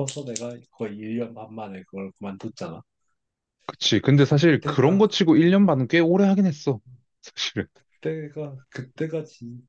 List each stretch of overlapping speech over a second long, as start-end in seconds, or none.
4.2-5.9